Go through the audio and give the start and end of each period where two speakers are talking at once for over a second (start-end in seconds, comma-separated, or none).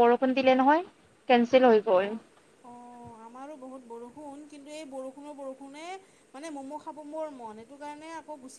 none